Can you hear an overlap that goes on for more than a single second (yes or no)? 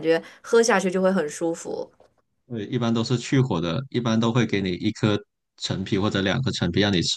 no